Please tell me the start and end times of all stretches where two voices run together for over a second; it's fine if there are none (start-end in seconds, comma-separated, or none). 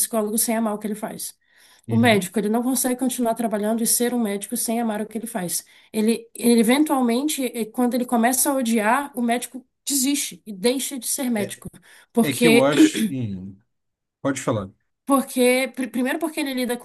none